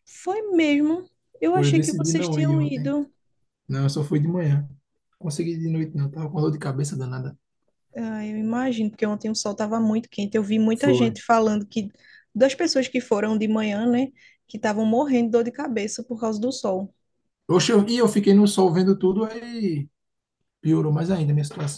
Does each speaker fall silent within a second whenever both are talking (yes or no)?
no